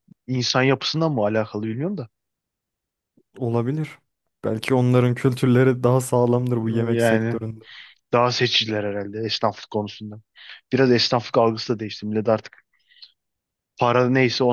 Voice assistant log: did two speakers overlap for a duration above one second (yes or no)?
no